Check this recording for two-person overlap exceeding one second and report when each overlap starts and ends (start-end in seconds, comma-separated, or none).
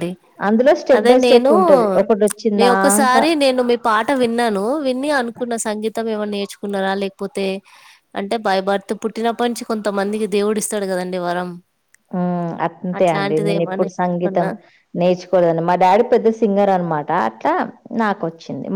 13.0-14.5